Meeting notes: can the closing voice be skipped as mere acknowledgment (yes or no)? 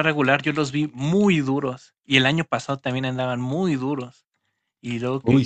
yes